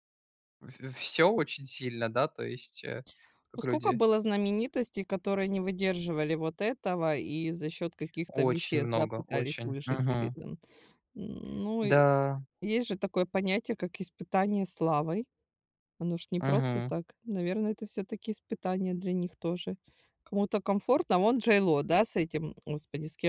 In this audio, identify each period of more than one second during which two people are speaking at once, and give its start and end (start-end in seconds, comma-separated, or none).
8.3-10.4